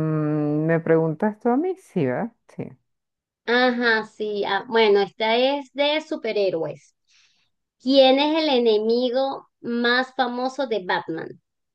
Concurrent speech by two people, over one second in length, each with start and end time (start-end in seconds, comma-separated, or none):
none